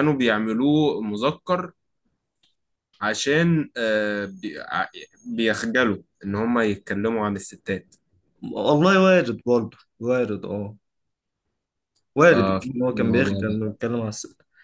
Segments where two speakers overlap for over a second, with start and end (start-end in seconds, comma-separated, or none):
12.3-13.6